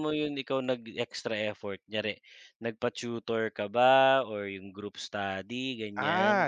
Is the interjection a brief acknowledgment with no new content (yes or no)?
no